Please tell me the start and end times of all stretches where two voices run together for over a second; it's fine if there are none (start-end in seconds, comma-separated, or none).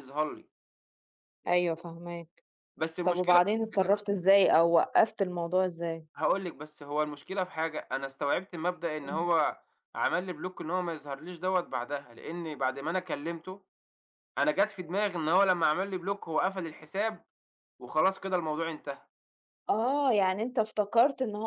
none